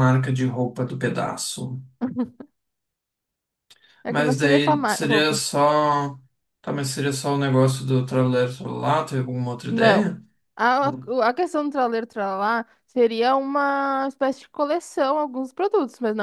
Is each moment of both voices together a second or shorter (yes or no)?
no